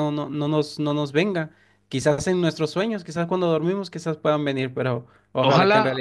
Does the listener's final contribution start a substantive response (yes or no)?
yes